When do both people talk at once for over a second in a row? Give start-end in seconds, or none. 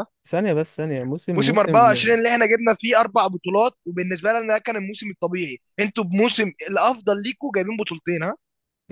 none